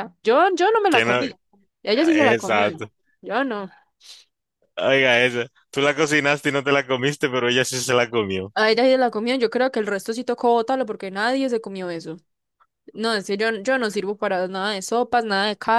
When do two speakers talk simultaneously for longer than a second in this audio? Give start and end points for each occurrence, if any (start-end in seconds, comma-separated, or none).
none